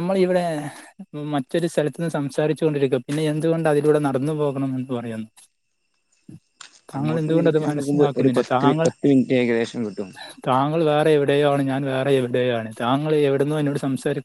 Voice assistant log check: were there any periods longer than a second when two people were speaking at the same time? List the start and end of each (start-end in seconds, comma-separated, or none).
7.0-8.9